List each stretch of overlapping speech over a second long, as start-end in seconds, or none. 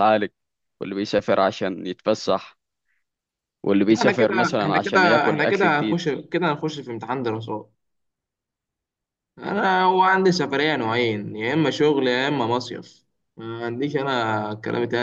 3.9-6.0